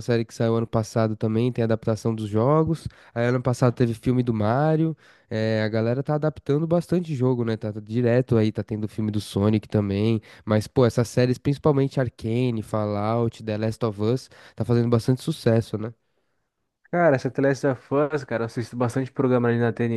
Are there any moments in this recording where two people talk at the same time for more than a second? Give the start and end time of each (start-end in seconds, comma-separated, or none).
none